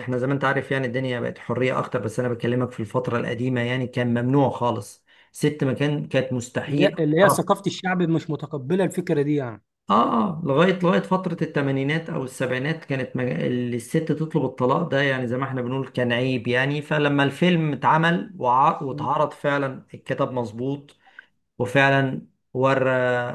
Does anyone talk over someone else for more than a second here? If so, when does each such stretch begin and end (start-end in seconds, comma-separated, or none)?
none